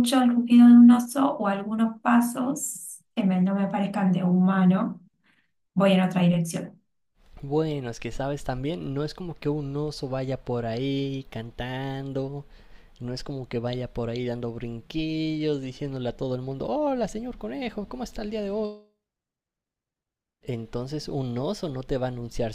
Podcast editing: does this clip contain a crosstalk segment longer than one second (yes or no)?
no